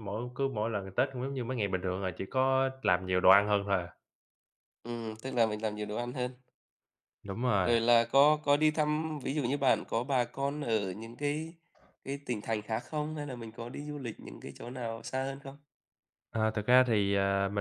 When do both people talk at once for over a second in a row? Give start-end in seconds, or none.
none